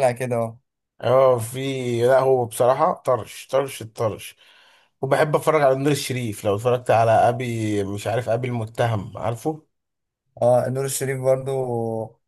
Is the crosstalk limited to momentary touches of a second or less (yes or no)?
yes